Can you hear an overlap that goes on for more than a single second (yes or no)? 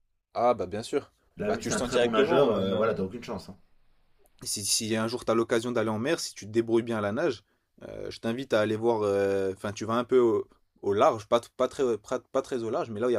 yes